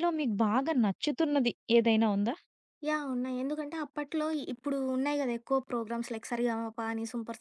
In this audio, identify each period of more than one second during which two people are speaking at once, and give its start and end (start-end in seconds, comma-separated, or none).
none